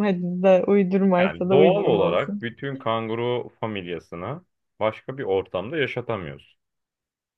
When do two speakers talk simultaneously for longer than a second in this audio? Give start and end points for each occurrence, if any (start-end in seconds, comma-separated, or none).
1.2-2.5